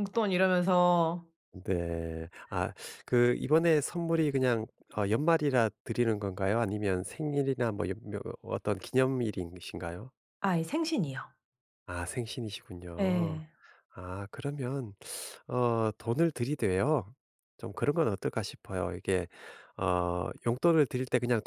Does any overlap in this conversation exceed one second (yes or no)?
no